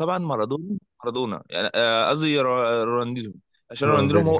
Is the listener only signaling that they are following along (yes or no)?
yes